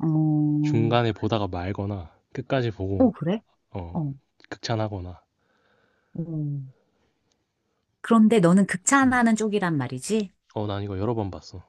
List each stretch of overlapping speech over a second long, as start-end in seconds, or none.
none